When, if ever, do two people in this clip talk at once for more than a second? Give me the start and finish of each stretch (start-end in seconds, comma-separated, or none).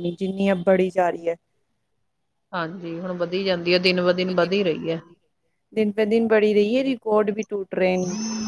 none